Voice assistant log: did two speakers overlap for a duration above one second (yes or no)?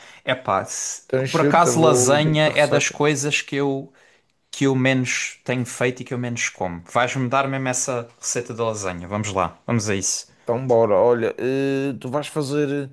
yes